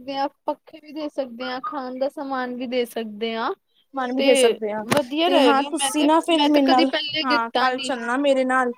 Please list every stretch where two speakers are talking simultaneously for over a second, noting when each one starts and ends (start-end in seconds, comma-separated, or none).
5.2-7.9